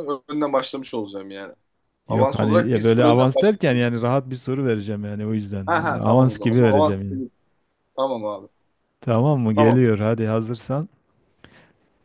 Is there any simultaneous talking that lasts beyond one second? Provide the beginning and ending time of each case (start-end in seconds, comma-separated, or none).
2.1-3.9, 5.7-7.0